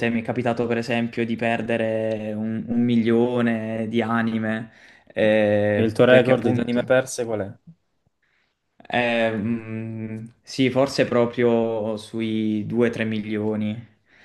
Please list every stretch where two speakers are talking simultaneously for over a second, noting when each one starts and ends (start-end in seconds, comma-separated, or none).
5.7-6.9